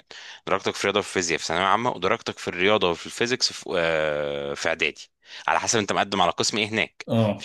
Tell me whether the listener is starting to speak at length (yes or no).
no